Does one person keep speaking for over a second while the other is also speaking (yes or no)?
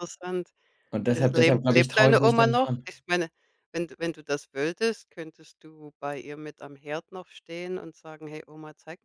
yes